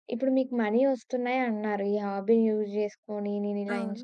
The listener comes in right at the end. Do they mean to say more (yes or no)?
no